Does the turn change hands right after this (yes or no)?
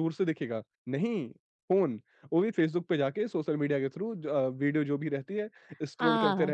yes